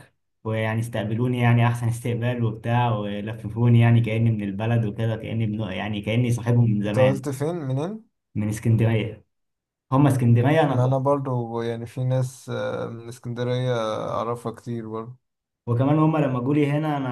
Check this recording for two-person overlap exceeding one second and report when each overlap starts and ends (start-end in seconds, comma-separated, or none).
none